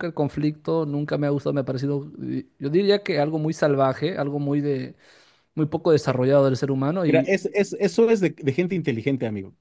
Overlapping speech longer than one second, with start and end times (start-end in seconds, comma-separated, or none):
none